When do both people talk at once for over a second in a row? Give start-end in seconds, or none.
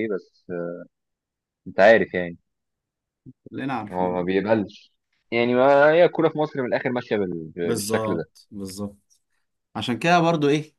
none